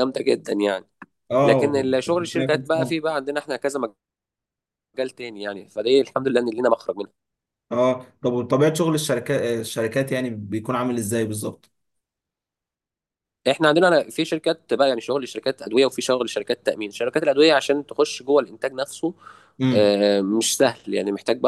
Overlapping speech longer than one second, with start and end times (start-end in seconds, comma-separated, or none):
1.4-2.9